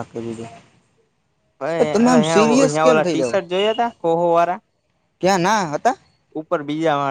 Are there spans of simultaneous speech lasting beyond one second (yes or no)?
yes